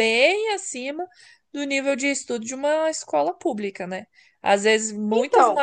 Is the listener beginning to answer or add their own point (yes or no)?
no